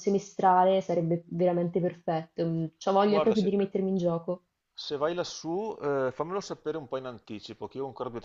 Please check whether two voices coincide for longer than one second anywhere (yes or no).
no